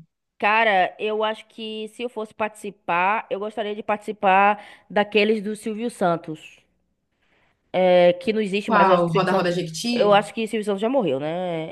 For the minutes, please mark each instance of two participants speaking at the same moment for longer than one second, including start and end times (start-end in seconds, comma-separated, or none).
8.6-10.2